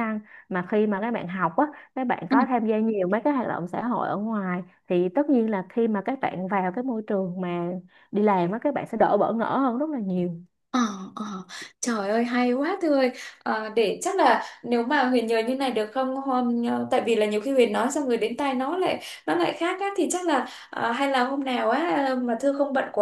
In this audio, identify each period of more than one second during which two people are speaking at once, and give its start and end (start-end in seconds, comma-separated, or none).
none